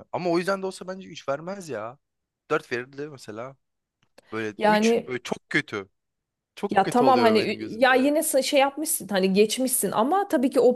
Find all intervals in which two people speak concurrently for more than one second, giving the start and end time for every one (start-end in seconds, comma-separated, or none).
6.7-8.1